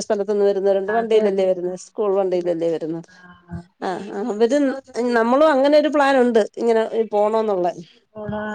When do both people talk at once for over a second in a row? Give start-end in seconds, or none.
1.0-2.5